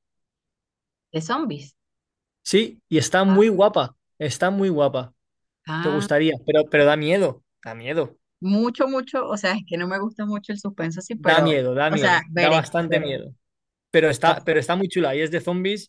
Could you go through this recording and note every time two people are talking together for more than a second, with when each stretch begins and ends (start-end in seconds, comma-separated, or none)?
11.1-13.1